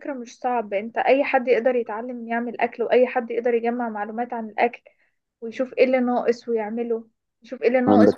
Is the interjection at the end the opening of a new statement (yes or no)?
no